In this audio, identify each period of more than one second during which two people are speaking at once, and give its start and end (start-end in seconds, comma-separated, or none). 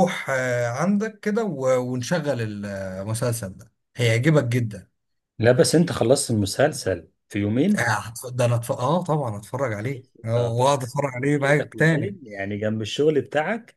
10.3-12.2